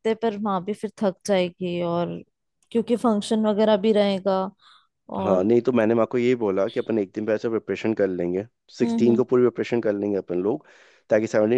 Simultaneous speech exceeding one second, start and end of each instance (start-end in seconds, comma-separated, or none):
none